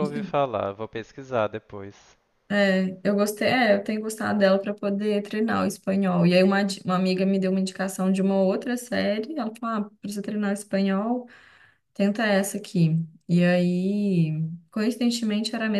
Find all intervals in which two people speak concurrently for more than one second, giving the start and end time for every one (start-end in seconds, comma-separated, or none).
none